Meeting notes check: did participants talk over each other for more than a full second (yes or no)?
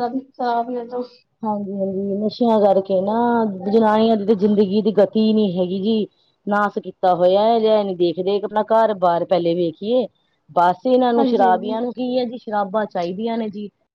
no